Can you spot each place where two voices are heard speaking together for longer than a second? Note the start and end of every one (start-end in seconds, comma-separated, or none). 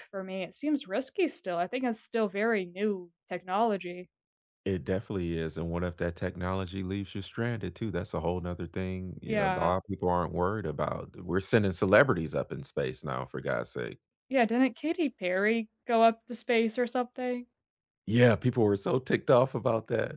none